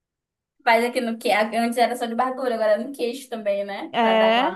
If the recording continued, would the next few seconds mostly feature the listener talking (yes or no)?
no